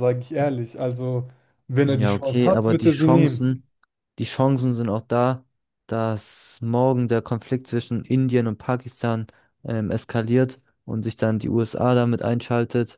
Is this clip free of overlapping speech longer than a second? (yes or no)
no